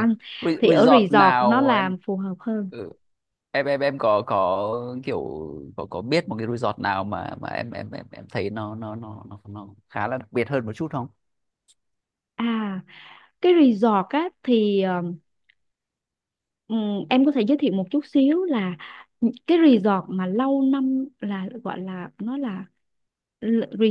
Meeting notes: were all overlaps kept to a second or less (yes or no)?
no